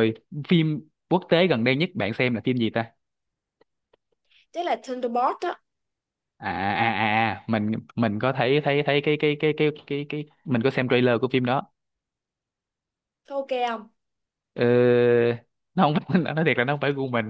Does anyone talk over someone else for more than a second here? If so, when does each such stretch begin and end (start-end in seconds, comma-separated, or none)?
none